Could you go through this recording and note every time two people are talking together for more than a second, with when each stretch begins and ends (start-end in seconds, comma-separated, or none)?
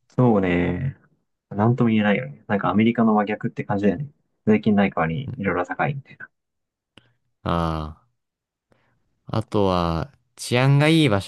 none